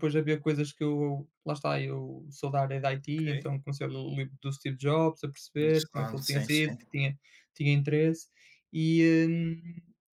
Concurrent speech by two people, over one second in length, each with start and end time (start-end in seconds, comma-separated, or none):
5.6-6.8